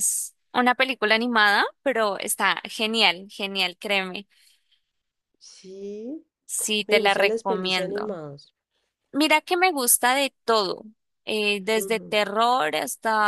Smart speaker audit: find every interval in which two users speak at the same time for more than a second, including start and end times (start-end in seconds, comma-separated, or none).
6.9-8.2